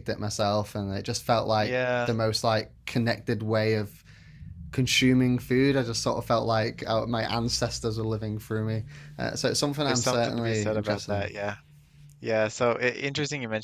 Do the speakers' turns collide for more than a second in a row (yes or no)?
yes